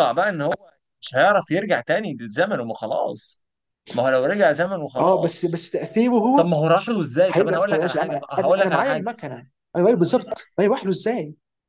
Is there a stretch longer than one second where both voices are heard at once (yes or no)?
yes